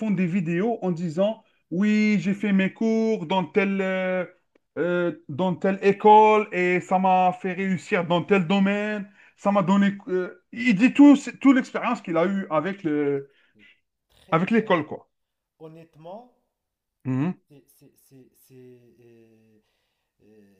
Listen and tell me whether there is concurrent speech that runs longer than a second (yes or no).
no